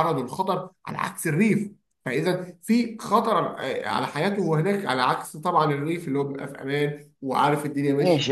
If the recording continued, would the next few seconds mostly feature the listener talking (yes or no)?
yes